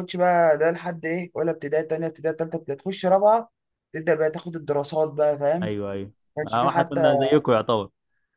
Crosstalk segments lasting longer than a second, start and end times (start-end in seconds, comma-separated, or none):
none